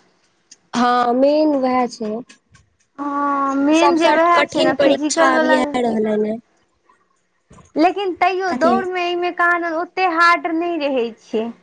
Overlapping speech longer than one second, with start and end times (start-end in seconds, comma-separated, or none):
3.8-5.6